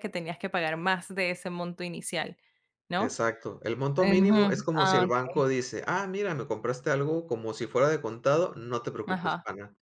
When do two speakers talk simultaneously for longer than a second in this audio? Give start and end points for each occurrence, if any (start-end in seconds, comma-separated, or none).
4.0-5.4